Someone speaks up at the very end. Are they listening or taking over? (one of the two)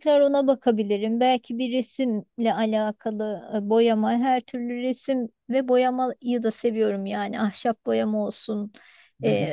listening